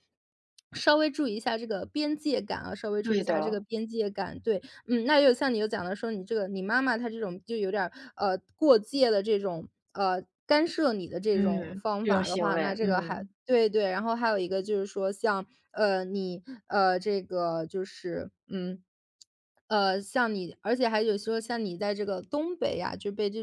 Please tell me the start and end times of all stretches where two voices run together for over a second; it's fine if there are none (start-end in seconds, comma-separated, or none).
11.3-13.3